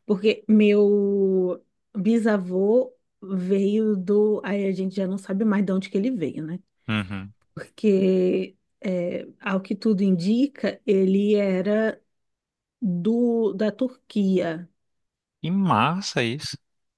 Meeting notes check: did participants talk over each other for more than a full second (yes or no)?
no